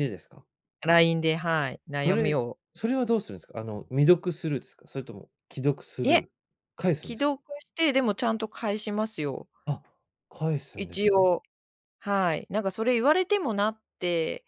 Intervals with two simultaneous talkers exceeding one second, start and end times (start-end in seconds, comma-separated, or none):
none